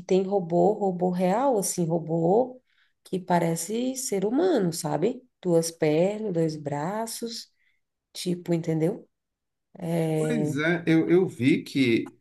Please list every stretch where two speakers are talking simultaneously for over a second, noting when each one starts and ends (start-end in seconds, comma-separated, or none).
none